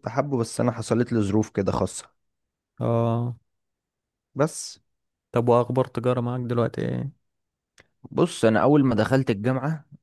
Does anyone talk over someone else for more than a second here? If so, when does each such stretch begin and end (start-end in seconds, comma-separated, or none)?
none